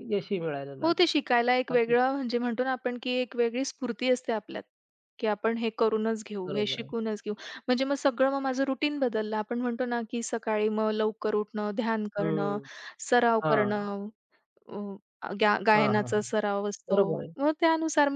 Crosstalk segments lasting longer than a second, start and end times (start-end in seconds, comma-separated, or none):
none